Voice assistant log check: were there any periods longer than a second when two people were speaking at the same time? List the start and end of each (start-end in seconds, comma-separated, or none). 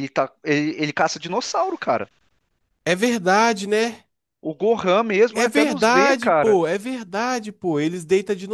5.3-6.6